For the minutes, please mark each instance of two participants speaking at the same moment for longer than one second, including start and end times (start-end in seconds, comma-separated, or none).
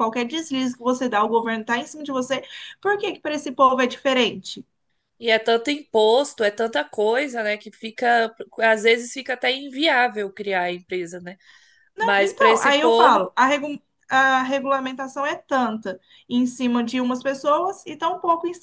12.0-13.3